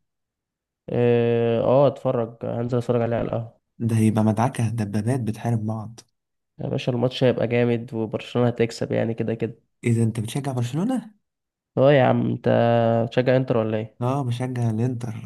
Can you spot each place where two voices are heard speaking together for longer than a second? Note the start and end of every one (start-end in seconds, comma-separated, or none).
none